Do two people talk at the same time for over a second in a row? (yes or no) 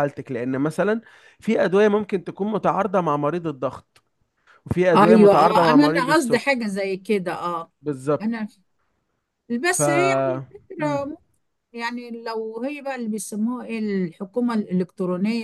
yes